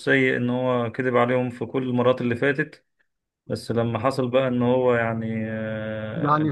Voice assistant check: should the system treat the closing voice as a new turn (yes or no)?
no